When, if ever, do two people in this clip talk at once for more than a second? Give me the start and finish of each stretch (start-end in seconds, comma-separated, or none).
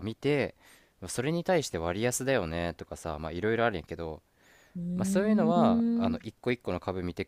5.0-6.2